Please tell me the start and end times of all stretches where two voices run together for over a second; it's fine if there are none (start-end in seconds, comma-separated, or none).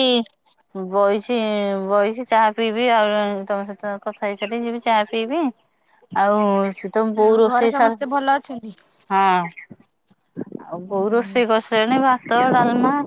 7.3-8.7